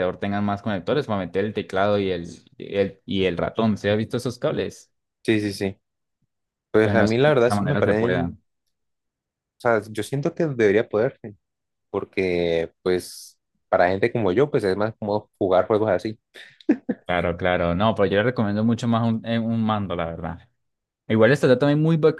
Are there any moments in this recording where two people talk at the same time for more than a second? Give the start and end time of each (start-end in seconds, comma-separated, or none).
6.8-8.3